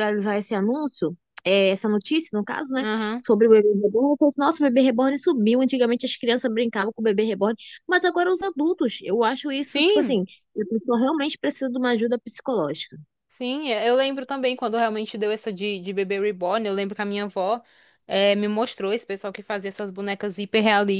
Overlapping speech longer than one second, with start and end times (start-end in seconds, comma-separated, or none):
none